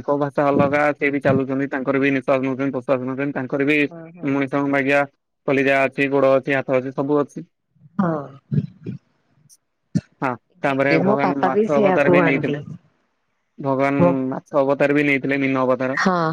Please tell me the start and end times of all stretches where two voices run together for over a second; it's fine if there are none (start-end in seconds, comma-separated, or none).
10.7-12.6